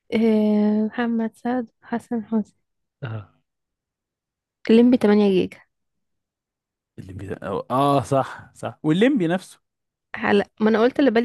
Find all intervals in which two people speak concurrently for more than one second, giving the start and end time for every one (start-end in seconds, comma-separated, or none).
none